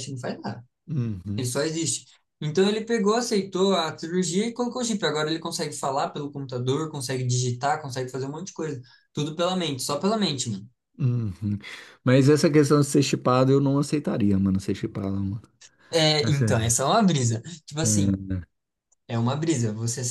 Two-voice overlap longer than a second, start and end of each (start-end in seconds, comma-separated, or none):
none